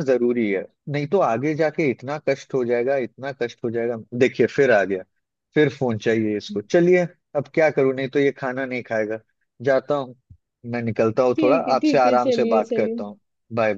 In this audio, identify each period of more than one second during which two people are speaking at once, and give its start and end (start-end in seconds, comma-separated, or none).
11.3-13.0